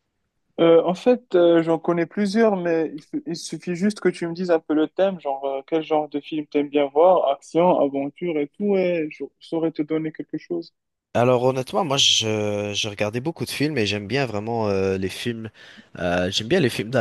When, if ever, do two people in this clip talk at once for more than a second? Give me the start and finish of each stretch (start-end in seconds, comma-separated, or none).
none